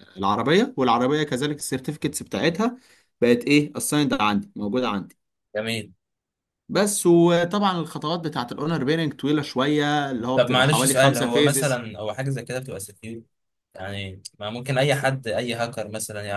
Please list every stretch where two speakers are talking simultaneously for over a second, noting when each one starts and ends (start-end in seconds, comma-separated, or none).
10.3-11.8